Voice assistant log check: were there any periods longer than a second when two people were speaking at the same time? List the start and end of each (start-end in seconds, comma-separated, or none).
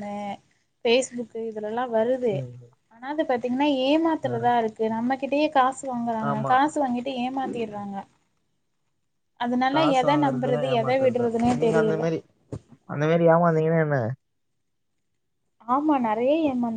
9.7-12.0